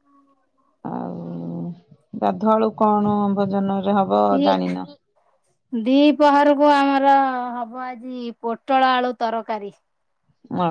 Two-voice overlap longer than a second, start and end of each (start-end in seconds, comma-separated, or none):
none